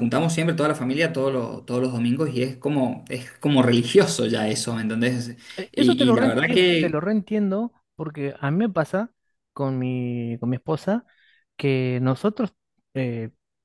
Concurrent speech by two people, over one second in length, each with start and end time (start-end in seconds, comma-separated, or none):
5.7-7.1